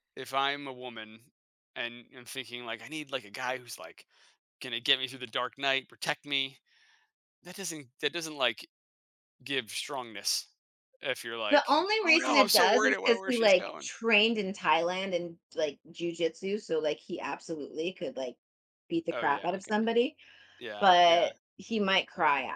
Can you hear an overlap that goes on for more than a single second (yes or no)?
yes